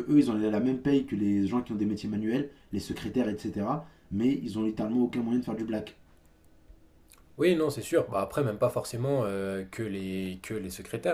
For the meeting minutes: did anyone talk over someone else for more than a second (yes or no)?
no